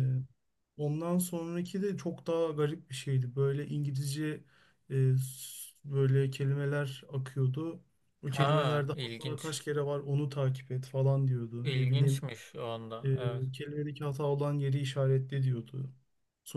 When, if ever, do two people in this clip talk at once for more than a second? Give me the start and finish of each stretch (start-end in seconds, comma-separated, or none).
8.3-9.6